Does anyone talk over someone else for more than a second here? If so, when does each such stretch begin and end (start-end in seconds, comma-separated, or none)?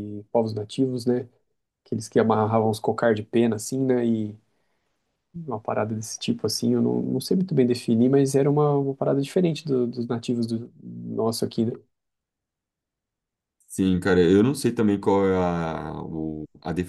none